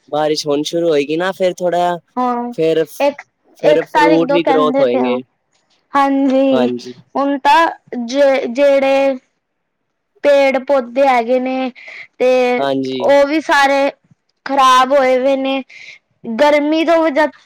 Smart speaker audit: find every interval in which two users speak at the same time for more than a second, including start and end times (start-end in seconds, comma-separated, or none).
3.6-5.2